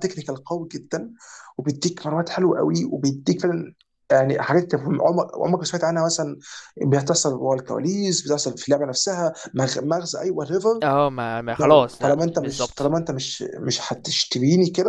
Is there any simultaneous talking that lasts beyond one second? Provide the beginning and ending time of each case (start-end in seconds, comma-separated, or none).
11.6-12.9